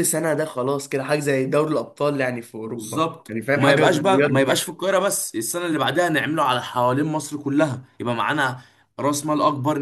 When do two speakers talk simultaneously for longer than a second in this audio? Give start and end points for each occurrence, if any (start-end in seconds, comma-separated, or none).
2.6-4.6